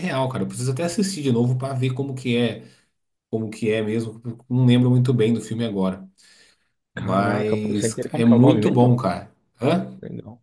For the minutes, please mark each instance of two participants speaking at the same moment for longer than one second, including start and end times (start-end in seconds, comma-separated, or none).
6.9-8.9